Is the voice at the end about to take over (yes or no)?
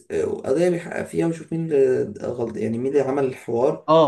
yes